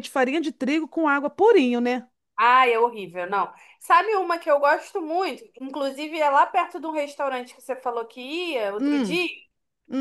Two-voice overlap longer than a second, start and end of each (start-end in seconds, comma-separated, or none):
none